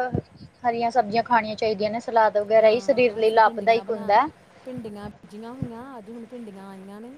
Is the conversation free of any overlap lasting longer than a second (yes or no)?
no